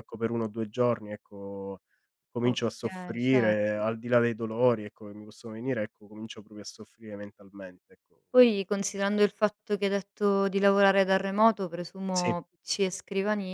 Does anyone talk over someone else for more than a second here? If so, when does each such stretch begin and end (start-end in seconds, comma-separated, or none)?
2.4-3.8